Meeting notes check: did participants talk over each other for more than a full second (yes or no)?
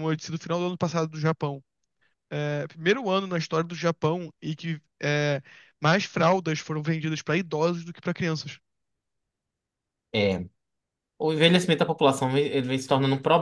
no